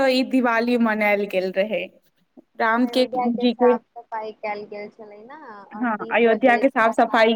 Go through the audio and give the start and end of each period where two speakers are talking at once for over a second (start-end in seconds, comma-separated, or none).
none